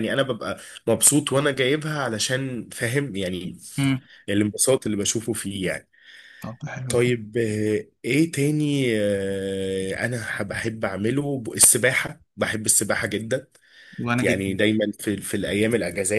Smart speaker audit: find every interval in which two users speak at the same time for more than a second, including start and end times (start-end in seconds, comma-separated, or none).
none